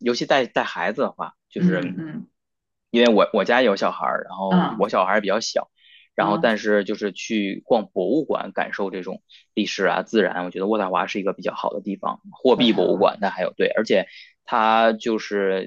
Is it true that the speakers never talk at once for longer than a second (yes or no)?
yes